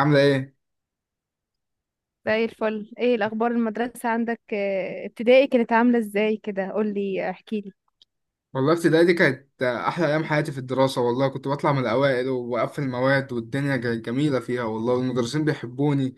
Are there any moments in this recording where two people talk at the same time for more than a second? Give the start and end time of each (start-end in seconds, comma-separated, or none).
none